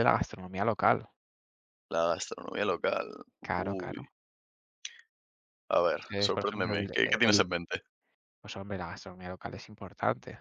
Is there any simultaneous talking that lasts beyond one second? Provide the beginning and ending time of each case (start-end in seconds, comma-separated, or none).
6.1-7.4